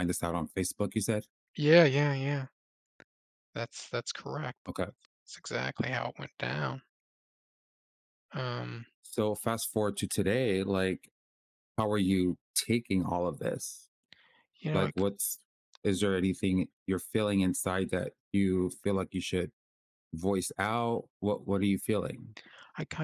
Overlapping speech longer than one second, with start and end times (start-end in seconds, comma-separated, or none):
none